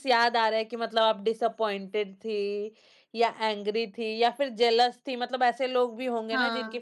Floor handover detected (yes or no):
no